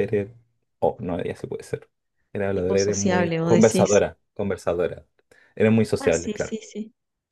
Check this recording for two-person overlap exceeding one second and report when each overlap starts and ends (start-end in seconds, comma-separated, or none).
2.5-4.0